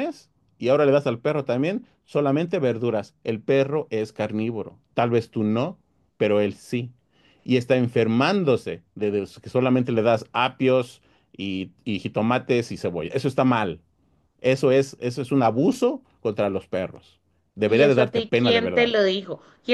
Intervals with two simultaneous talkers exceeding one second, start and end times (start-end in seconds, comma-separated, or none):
17.6-18.9